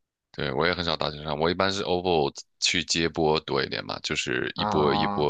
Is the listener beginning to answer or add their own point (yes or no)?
no